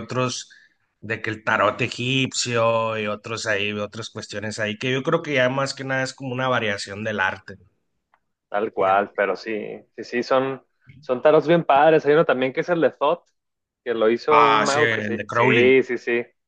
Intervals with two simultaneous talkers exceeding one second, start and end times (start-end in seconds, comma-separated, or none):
14.3-15.7